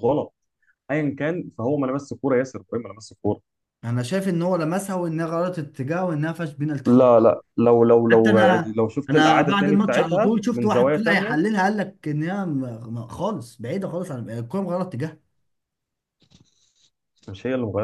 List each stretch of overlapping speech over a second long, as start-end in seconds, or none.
8.1-11.4